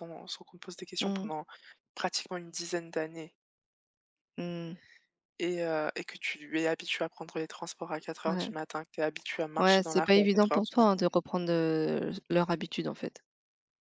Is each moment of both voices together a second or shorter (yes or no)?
no